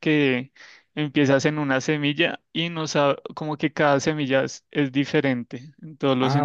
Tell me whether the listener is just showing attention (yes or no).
no